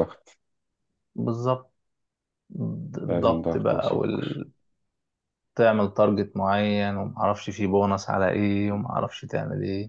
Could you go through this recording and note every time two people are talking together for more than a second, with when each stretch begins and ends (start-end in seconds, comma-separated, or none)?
3.1-4.4